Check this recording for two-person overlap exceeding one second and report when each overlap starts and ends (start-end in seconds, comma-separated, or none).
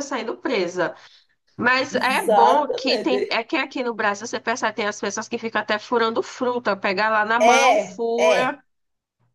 1.9-3.4, 7.4-8.6